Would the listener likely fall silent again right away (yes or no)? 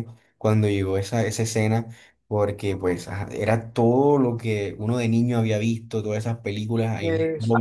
yes